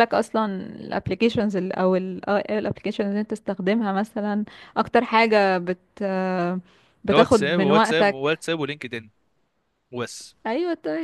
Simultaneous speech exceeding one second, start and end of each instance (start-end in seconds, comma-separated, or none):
7.1-8.3